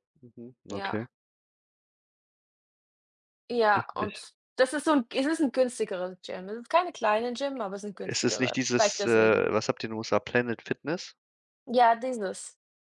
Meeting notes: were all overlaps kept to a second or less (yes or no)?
no